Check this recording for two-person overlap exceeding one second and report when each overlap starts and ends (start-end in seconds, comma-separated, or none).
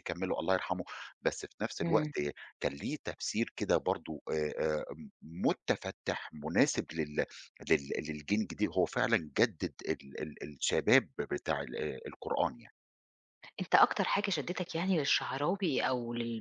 none